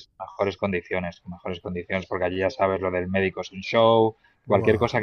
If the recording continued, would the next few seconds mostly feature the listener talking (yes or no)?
no